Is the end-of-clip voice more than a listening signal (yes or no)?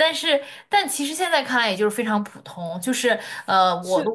yes